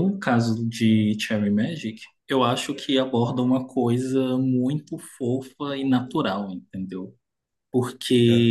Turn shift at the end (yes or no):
no